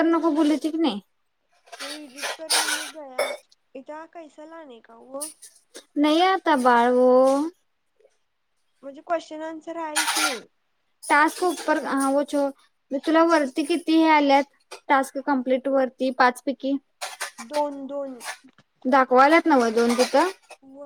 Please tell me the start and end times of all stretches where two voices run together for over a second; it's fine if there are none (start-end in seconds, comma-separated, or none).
none